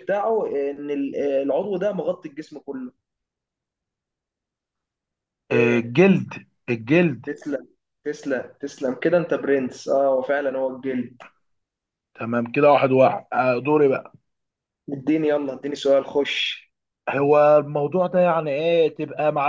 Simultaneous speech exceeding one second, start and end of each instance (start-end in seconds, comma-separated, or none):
none